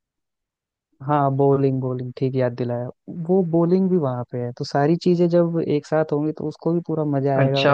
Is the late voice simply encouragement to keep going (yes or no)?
no